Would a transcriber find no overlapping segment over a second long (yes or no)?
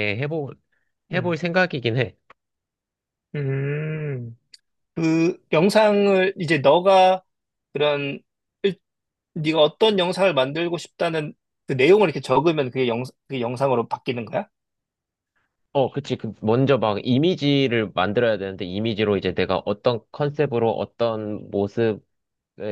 yes